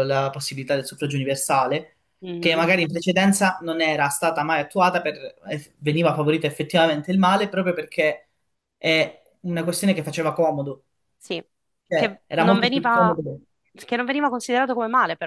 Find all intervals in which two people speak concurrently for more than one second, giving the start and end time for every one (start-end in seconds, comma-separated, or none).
11.9-13.2